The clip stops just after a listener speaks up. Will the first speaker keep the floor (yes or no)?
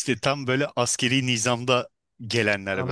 no